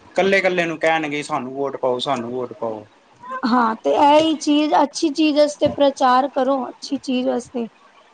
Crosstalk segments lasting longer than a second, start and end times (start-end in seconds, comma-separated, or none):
none